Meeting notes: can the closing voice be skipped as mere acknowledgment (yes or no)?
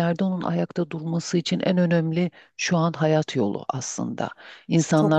yes